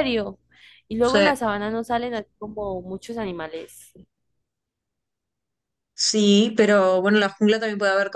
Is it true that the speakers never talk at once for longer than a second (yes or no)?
yes